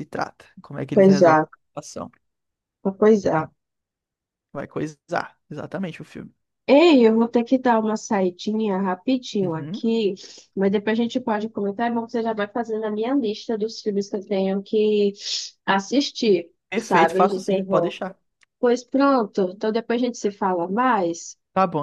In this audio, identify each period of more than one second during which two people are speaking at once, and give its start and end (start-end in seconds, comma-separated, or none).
16.7-17.9